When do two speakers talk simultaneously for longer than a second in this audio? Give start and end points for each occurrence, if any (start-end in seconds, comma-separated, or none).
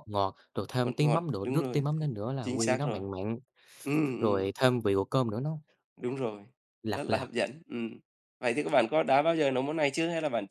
0.8-3.0